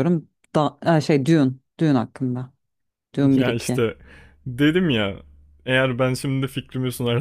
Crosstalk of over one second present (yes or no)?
no